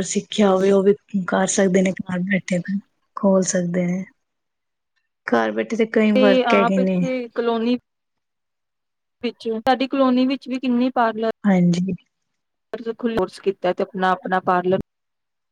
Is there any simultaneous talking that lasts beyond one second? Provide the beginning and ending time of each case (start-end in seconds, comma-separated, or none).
none